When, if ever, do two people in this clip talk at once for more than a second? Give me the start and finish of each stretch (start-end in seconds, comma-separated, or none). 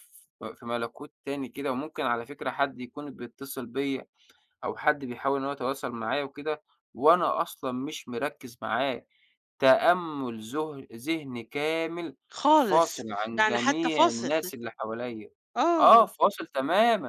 12.5-14.3